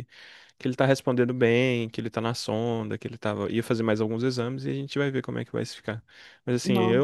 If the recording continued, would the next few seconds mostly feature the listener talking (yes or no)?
no